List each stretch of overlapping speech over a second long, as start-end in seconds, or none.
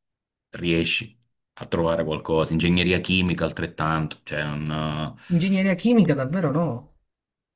none